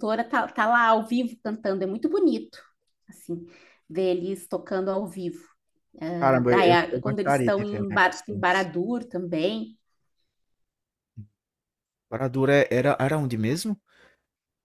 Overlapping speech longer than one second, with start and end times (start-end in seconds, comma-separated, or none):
6.5-8.7